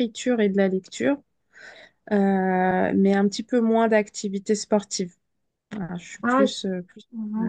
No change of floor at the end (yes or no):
no